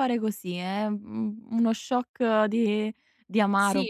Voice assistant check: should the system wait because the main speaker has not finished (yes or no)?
no